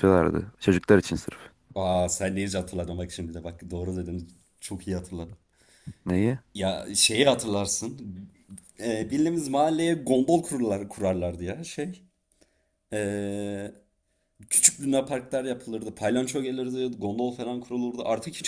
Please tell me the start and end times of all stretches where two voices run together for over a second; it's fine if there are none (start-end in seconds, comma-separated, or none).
none